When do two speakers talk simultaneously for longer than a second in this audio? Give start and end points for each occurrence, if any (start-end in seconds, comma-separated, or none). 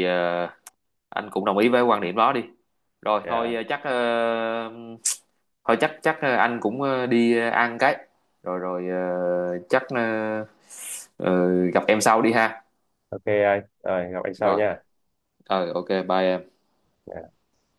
none